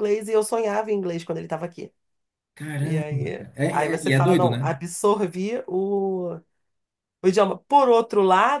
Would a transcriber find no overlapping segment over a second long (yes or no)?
no